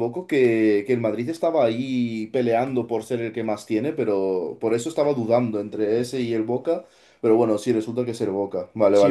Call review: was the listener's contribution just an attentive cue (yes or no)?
no